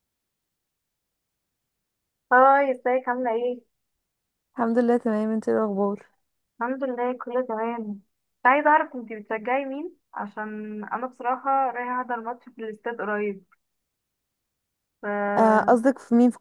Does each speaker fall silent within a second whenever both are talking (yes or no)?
yes